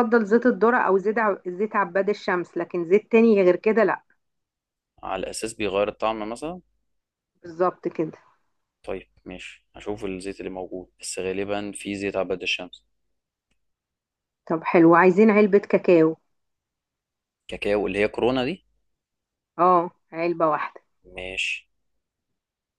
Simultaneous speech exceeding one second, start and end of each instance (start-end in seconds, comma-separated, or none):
none